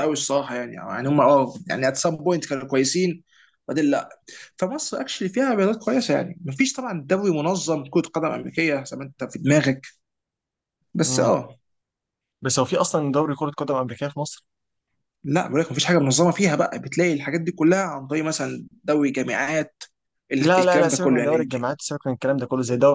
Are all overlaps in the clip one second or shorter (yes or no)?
no